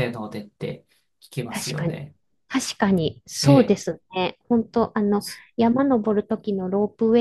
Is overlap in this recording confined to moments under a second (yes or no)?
yes